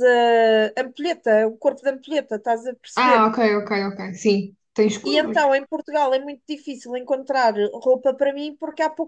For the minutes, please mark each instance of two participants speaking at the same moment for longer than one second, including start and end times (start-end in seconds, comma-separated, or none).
none